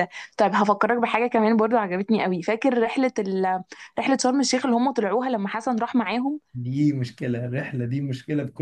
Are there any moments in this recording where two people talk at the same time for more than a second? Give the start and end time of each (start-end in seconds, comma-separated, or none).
none